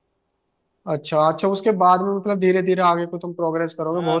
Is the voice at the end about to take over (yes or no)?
yes